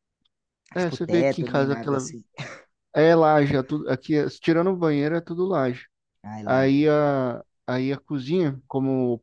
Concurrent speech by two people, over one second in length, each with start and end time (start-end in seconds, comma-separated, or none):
0.7-2.1